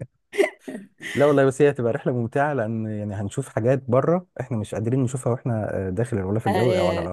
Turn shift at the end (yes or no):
yes